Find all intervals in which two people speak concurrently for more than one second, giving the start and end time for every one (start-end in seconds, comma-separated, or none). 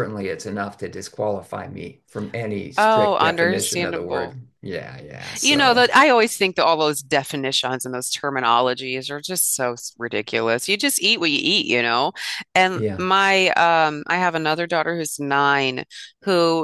2.8-4.4